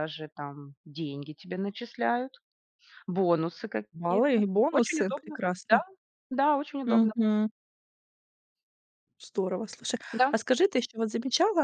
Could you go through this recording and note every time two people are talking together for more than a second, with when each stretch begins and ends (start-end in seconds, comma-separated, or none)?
3.9-5.8